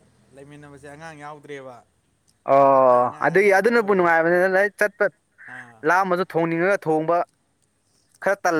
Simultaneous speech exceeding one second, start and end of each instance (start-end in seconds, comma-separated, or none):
2.6-4.1